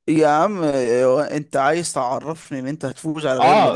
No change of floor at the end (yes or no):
no